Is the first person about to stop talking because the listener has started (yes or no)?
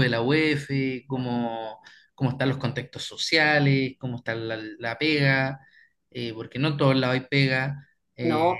yes